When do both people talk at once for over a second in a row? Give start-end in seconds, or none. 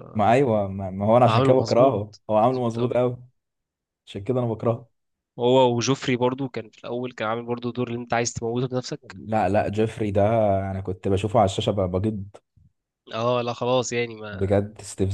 1.3-3.0